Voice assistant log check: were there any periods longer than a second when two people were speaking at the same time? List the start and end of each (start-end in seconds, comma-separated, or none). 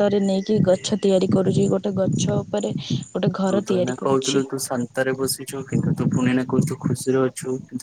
none